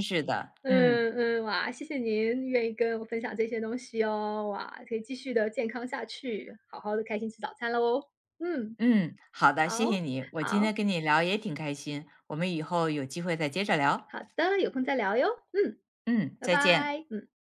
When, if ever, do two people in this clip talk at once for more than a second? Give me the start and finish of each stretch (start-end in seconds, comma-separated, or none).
none